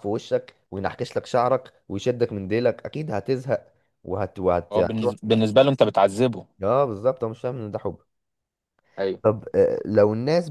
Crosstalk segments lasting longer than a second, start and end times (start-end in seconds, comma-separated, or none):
none